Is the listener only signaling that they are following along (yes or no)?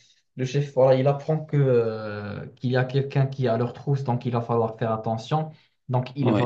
yes